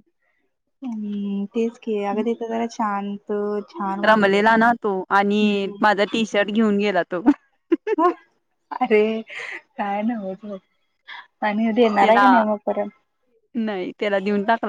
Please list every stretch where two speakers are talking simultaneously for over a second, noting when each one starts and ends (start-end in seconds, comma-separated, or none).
none